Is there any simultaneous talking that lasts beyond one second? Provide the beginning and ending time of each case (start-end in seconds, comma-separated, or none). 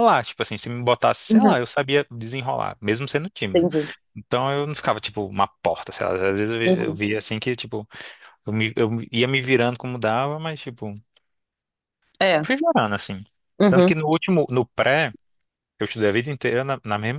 none